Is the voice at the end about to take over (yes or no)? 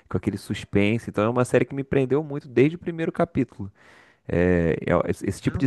no